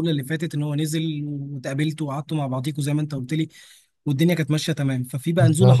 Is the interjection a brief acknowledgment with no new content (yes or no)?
yes